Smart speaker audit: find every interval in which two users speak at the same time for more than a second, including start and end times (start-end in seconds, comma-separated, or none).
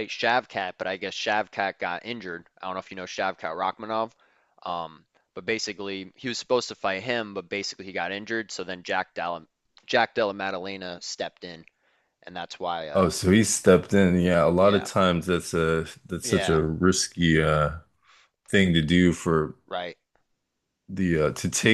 none